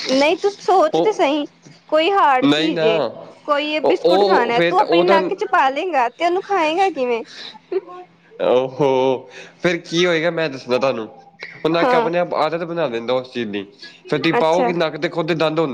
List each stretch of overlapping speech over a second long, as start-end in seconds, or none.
3.8-5.2